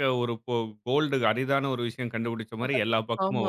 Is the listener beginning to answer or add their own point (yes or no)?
yes